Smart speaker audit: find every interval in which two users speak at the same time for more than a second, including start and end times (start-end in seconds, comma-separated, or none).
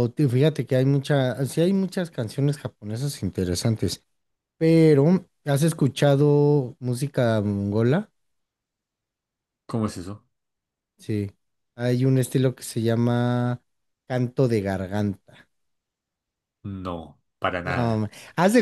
none